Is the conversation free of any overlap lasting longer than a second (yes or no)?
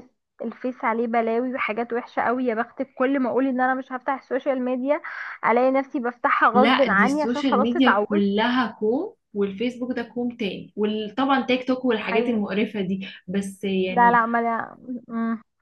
no